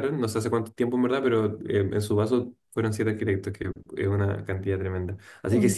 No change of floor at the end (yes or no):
yes